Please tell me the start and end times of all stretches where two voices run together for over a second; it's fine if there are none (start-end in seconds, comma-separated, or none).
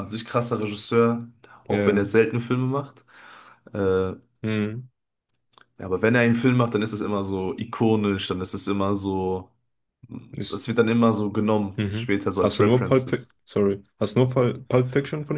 11.8-13.3